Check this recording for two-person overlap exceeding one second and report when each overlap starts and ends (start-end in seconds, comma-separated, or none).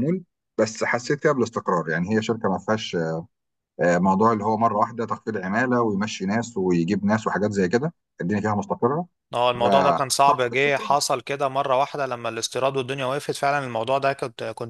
9.5-11.0